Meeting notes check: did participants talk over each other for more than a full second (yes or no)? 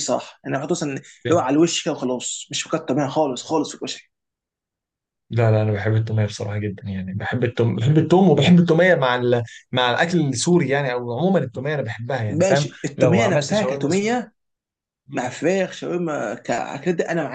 yes